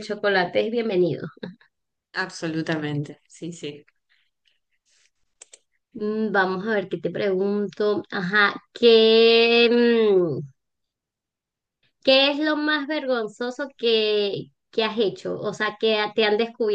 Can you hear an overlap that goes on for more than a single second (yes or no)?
no